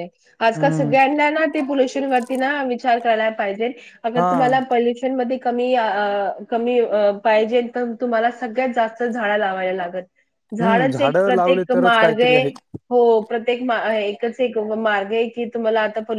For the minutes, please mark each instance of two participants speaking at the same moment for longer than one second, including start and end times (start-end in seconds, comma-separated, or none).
10.6-12.3